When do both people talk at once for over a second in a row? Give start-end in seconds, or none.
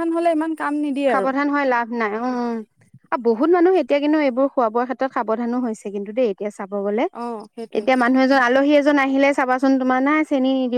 none